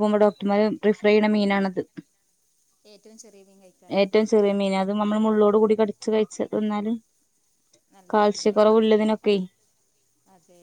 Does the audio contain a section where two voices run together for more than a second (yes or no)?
no